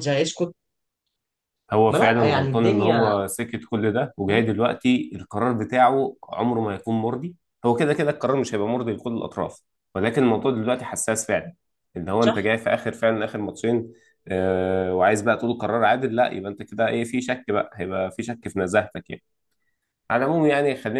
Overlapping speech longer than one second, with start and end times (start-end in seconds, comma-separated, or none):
1.9-3.1